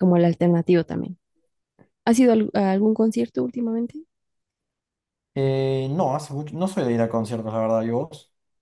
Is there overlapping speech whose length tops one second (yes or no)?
no